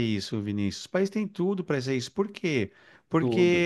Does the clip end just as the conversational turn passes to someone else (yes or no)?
no